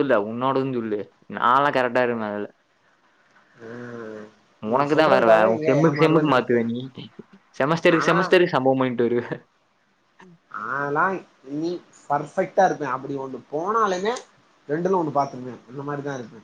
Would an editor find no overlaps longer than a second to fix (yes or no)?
no